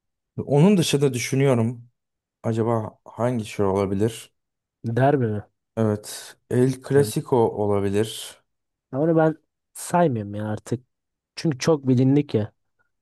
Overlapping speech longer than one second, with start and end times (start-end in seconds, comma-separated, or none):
none